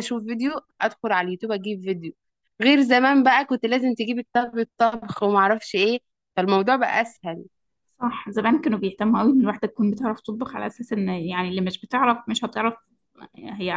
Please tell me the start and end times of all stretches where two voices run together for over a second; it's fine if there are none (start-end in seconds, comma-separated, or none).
none